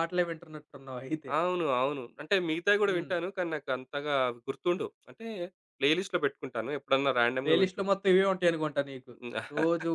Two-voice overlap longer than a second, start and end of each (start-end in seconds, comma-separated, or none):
none